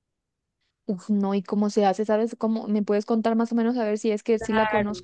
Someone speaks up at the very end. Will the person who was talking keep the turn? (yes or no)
no